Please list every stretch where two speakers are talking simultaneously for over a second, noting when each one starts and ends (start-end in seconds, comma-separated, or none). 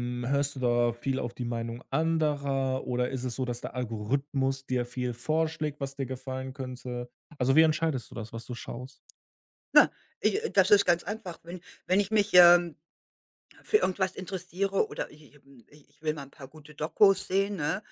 none